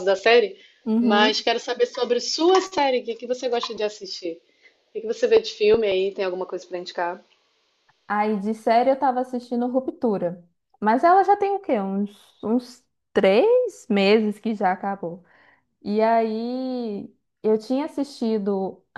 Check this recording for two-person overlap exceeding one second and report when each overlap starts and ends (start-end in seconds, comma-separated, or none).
none